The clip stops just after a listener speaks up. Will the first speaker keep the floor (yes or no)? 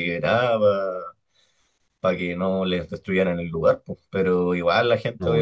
yes